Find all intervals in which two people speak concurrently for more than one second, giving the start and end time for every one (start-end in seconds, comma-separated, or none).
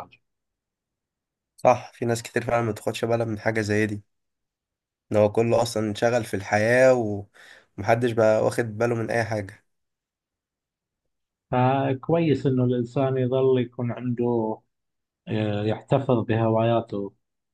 none